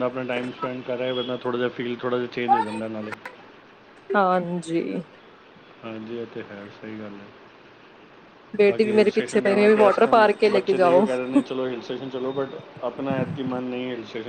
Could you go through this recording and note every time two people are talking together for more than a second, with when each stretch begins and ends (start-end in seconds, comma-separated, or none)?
8.7-11.1